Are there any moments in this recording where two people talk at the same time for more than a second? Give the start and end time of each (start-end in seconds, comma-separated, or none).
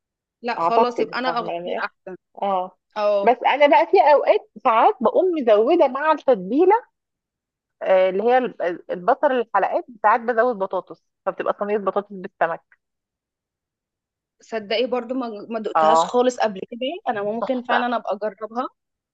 0.6-1.9